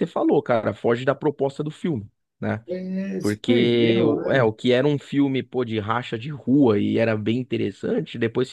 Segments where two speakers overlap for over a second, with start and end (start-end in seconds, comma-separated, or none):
3.2-4.5